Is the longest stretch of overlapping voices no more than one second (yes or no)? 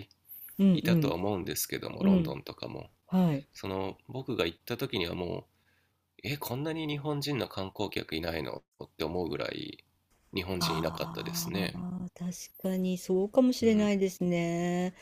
no